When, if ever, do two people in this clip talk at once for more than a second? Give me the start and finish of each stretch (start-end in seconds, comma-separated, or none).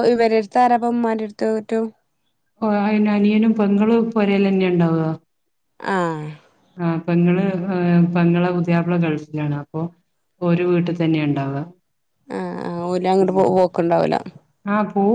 none